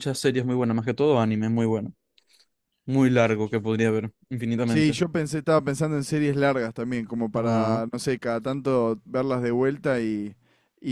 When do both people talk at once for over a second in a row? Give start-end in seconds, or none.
none